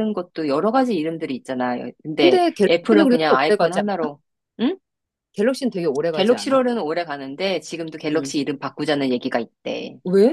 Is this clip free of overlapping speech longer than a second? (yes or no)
no